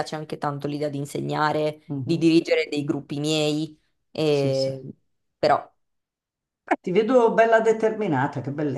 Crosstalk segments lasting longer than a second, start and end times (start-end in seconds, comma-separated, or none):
none